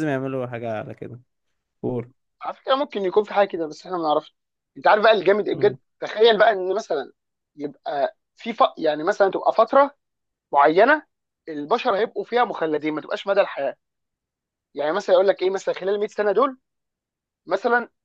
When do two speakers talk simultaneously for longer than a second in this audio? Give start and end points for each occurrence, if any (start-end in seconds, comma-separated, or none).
none